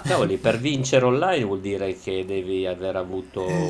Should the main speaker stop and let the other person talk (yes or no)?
yes